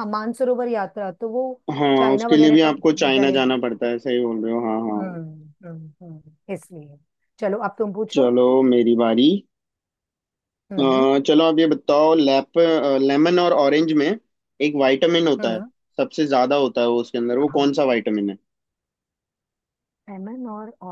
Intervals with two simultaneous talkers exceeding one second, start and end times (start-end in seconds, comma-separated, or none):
2.0-3.5